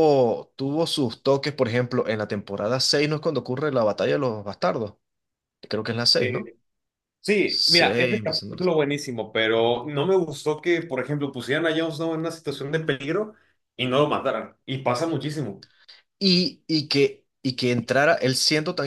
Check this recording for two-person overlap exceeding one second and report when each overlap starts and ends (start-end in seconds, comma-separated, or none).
7.4-8.6